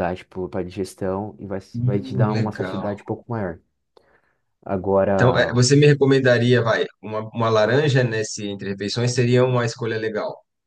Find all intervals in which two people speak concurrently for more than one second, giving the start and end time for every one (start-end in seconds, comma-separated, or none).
1.7-2.9